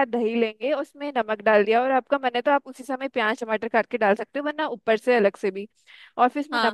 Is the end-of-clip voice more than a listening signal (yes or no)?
no